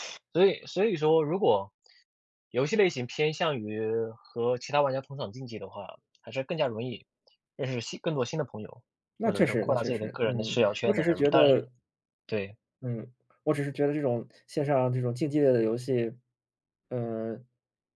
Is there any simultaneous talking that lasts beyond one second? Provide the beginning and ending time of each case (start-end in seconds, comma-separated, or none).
9.2-11.7